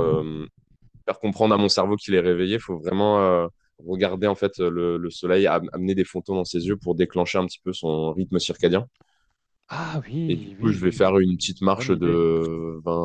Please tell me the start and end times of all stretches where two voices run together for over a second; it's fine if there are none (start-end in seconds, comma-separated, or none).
10.3-12.2